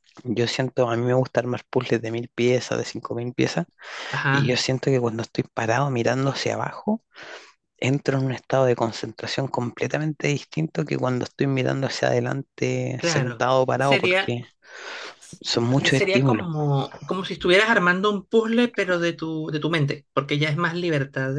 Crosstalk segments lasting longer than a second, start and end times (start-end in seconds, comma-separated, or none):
13.0-14.4